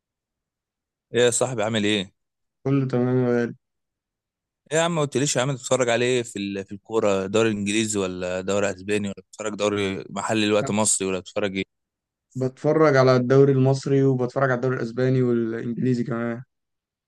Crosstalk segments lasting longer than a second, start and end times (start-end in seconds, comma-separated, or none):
none